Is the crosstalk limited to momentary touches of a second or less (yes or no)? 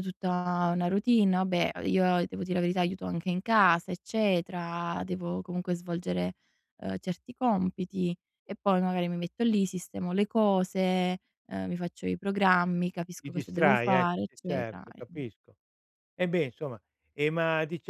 no